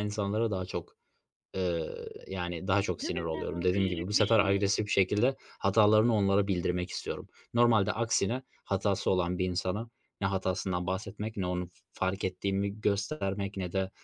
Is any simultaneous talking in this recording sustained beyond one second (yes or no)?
yes